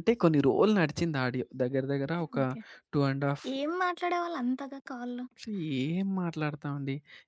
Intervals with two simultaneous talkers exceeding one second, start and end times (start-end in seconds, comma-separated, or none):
none